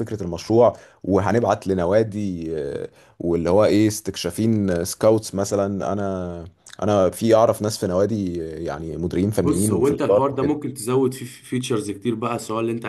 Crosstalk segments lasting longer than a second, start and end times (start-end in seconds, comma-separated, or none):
9.4-10.6